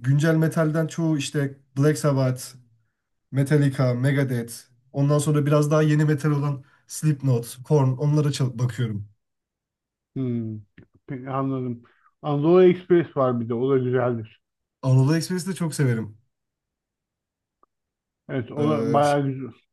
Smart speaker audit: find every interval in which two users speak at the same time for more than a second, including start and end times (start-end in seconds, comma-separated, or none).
none